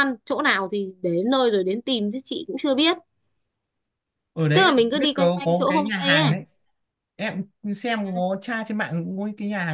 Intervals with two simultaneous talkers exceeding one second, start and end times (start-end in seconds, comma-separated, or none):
4.5-6.3